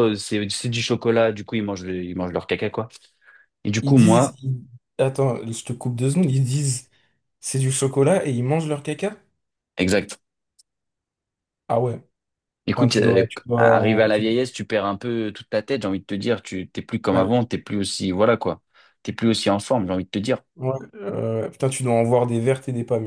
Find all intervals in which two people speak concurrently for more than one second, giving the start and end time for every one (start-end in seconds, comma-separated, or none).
12.7-14.3